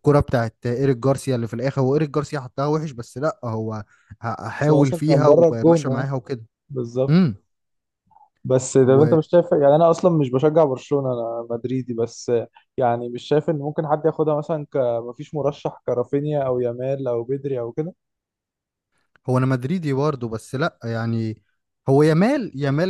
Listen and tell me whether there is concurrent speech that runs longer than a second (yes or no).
yes